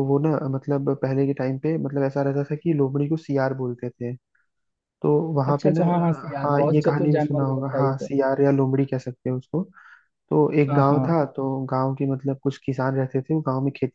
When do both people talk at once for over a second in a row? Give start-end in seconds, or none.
6.4-8.1